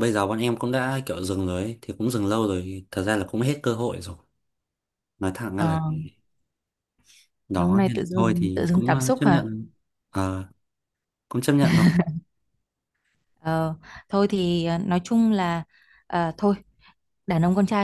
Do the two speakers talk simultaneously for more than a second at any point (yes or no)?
yes